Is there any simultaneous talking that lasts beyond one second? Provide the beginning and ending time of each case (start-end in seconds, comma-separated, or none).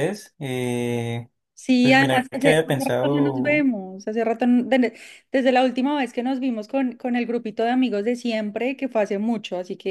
1.8-3.7